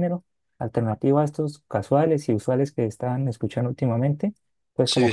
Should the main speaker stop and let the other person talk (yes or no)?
no